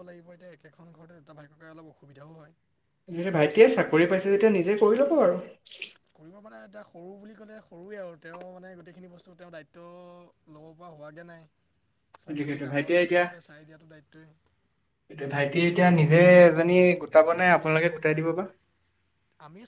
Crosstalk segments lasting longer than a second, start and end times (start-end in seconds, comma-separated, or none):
none